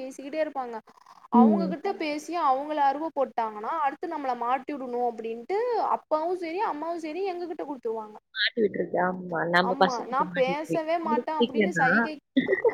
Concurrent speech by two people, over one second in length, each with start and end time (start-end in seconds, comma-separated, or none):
9.7-11.9